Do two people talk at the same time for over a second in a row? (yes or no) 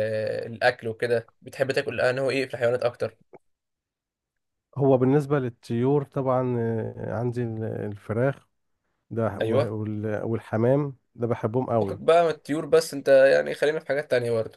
no